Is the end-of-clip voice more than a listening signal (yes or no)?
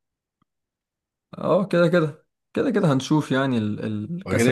yes